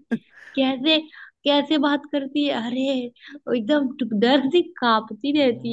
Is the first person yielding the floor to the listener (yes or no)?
yes